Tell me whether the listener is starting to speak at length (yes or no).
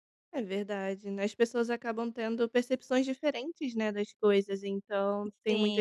no